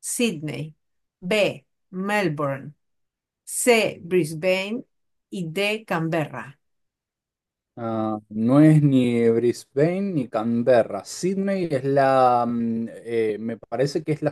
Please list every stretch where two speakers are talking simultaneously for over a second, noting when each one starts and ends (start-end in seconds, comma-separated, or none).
none